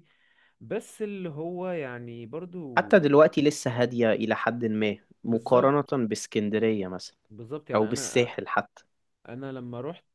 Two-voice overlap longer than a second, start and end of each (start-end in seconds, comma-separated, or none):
none